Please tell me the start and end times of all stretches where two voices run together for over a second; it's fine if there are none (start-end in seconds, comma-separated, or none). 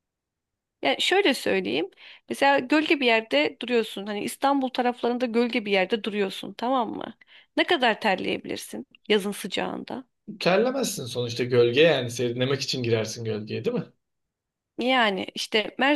none